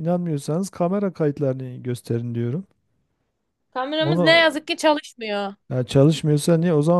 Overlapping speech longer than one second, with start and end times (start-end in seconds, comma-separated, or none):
none